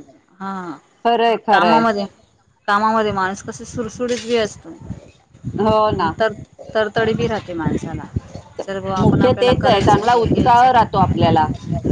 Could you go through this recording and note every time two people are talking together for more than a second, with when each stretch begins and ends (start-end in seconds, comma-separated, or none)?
9.1-10.8